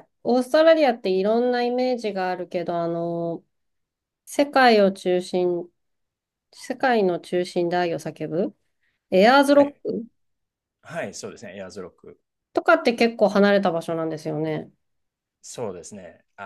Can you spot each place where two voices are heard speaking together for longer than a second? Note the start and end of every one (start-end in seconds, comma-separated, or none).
none